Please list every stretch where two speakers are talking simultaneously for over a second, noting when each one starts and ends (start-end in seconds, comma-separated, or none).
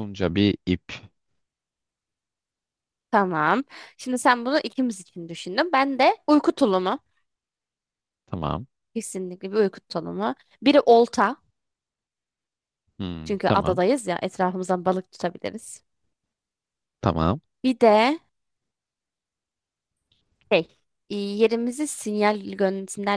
none